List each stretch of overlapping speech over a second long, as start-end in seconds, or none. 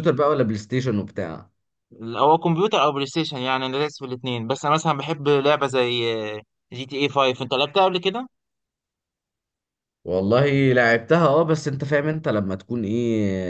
none